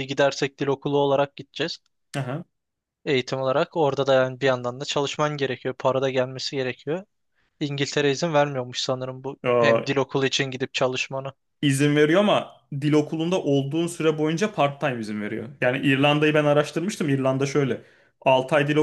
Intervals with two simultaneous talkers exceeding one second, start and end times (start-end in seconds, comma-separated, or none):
none